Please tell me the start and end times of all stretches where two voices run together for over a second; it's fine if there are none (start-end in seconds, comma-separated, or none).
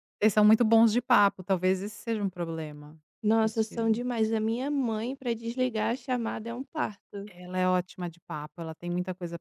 none